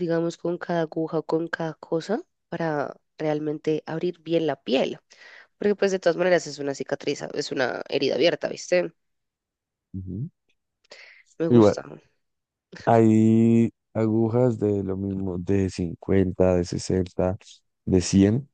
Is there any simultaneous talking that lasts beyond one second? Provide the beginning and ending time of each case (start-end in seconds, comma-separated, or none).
none